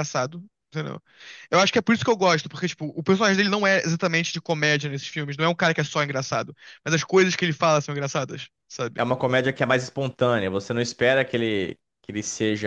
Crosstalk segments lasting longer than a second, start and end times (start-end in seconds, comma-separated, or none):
none